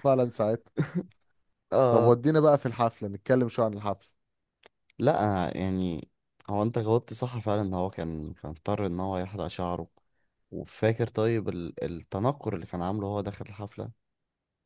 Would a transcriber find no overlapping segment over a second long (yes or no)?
yes